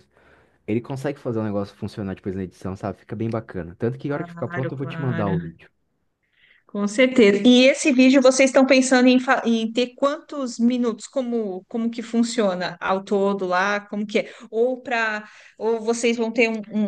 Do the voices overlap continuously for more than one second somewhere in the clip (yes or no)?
yes